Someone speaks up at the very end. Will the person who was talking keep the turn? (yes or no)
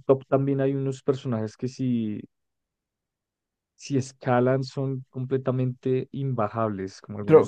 no